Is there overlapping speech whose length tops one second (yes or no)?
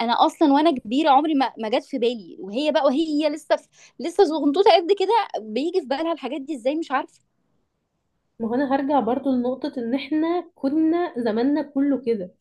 no